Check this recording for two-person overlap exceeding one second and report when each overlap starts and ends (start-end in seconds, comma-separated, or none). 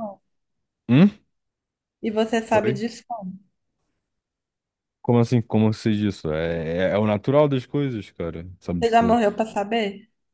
none